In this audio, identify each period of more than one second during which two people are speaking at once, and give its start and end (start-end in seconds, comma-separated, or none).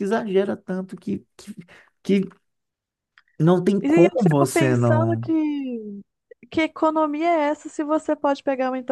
3.8-5.3